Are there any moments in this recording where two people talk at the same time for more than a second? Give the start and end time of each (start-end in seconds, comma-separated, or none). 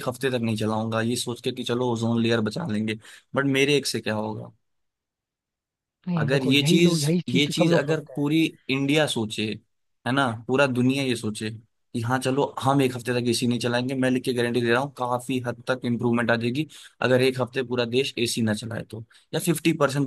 6.2-8.3